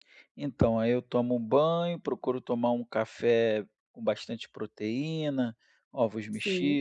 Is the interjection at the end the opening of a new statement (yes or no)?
no